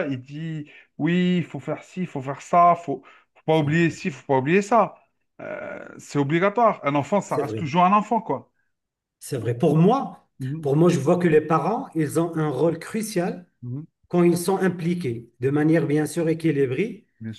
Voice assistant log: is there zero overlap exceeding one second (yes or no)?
yes